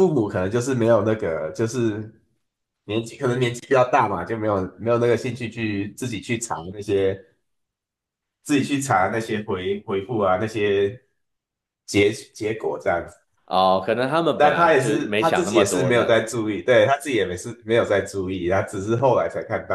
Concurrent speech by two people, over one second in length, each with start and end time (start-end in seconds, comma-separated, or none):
14.3-16.3